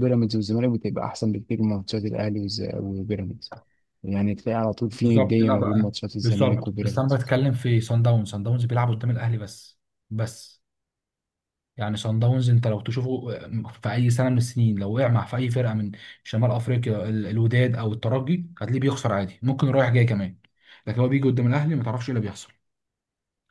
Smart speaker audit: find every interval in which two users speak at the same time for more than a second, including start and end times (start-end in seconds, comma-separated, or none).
4.9-7.2